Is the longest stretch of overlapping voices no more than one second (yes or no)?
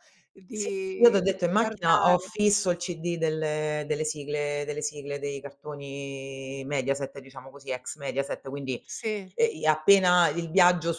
no